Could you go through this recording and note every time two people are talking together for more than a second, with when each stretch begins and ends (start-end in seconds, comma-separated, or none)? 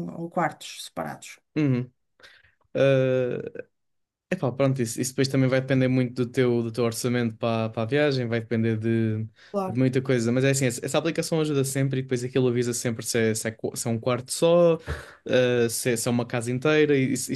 none